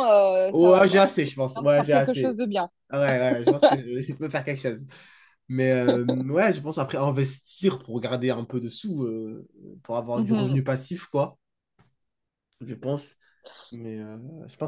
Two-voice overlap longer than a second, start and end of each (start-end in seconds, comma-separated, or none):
0.5-2.4